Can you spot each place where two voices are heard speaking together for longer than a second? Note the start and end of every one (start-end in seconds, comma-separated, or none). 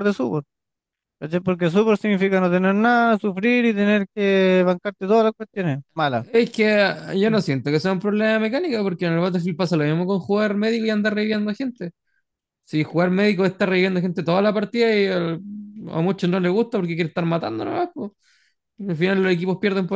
none